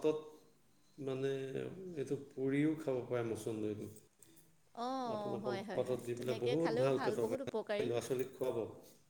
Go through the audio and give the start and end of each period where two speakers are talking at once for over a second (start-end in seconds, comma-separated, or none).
5.2-7.8